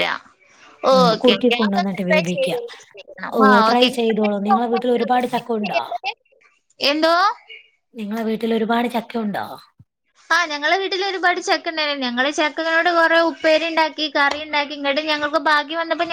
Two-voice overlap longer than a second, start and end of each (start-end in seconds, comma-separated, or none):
1.0-3.9